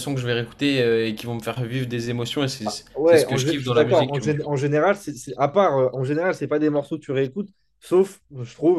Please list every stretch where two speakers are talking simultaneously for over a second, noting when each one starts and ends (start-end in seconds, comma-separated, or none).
3.0-4.3